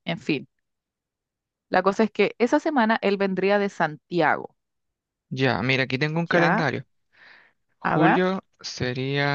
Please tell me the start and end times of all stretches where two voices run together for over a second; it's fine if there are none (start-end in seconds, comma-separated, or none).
none